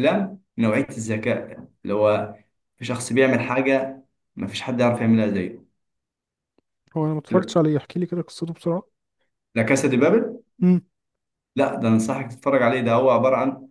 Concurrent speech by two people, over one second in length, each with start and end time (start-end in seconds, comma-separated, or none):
none